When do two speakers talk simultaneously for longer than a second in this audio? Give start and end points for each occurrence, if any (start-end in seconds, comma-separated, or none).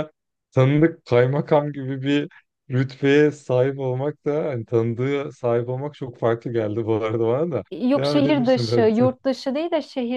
7.7-9.0